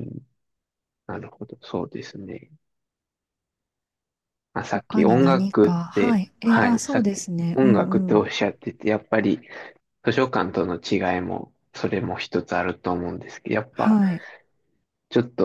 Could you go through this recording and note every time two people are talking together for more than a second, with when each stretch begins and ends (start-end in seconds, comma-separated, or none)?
4.9-8.2